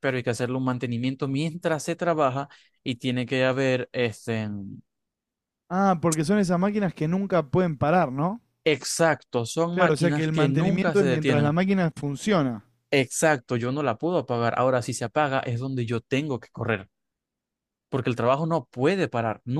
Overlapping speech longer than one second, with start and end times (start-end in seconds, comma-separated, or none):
9.7-11.6